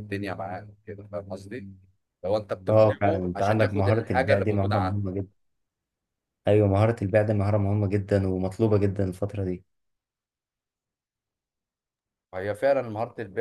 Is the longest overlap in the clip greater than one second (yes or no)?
yes